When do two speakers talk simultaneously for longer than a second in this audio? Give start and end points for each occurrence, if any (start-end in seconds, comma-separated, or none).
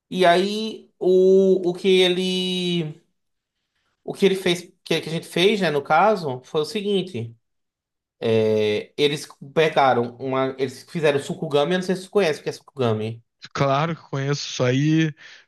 none